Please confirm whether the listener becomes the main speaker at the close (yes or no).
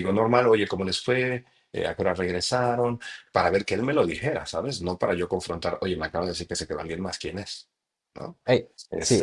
yes